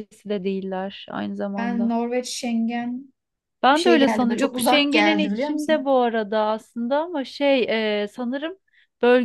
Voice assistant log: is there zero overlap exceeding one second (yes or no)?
no